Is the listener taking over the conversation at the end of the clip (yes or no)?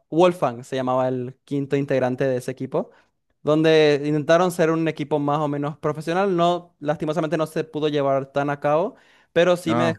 no